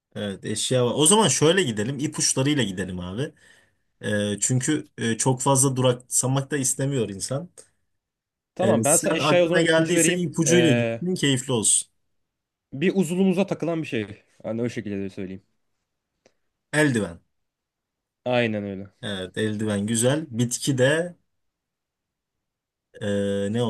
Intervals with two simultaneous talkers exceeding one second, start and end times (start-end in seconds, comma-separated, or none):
8.6-11.0